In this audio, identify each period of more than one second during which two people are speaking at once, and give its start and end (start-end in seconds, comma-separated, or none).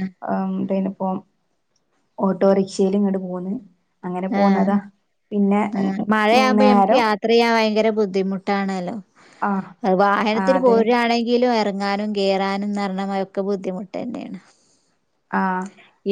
none